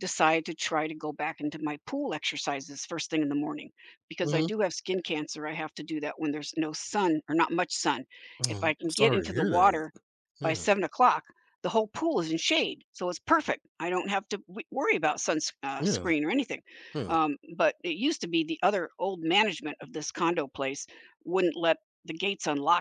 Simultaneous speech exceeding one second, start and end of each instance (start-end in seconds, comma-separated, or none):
8.5-9.8